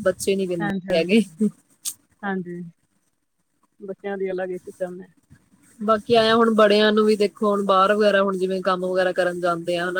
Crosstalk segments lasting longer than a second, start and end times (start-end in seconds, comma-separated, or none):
none